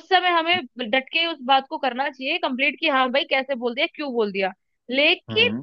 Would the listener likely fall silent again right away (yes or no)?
yes